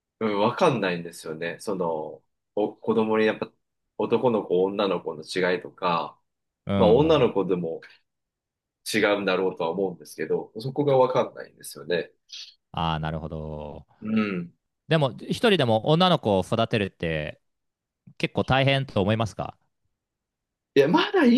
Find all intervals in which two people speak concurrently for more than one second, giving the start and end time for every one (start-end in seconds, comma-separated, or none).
none